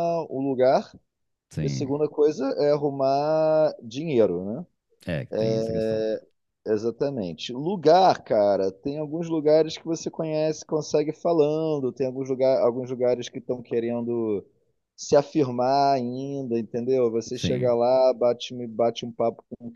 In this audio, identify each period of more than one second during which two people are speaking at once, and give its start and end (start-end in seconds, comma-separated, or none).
none